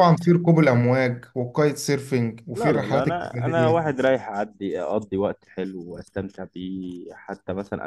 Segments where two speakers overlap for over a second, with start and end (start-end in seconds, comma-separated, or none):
2.5-3.9